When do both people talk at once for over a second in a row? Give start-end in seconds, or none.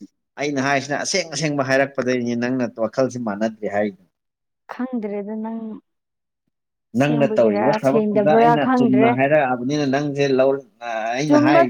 7.0-9.1